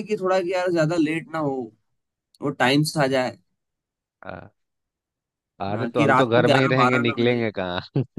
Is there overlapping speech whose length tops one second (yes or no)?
yes